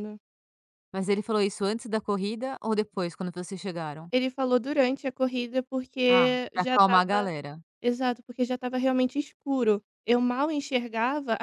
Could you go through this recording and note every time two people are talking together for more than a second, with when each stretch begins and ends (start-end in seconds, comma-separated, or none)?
6.1-7.3